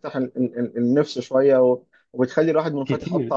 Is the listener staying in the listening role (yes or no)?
yes